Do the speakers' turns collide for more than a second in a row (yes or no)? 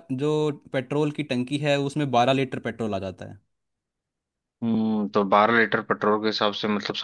no